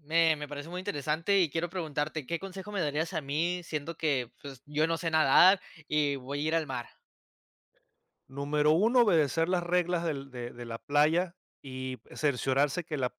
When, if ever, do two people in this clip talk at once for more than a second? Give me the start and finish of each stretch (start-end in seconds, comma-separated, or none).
none